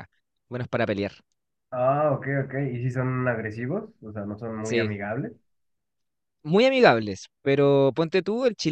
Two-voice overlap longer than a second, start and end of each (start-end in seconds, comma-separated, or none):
none